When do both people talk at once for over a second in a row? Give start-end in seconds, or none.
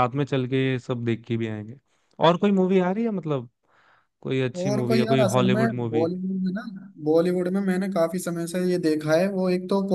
4.6-6.1